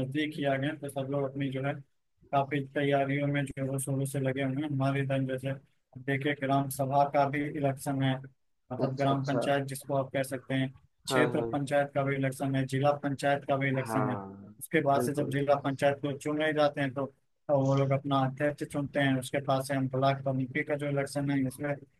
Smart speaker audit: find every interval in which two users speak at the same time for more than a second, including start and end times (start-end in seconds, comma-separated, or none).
none